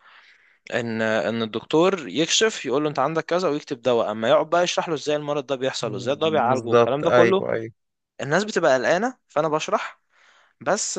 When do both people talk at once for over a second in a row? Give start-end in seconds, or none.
5.8-7.4